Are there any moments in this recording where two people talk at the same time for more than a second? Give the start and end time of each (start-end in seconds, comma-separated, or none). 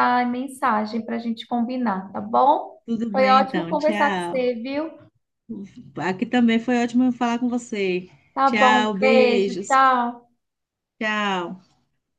3.1-4.4, 8.4-9.8